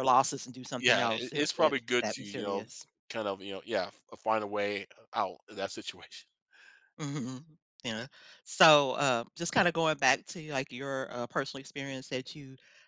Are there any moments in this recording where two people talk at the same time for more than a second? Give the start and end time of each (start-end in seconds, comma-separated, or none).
0.8-2.7